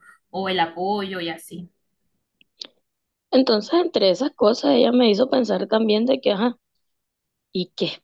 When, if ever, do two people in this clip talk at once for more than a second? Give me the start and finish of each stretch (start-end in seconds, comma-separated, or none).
none